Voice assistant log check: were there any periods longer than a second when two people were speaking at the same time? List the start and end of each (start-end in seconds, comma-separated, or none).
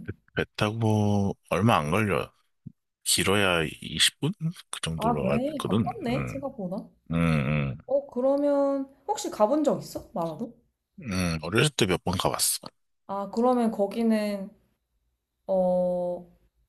5.0-6.4